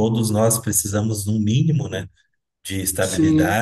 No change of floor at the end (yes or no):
yes